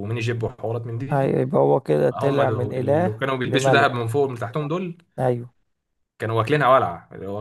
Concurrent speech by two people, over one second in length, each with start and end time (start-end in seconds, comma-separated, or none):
2.1-3.9